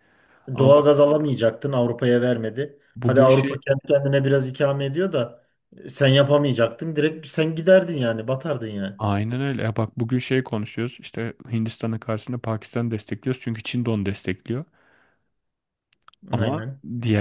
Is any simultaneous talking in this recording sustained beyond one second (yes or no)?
no